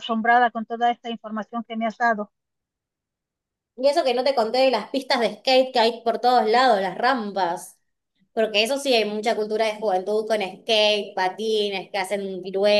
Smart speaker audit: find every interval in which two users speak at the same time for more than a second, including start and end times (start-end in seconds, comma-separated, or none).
none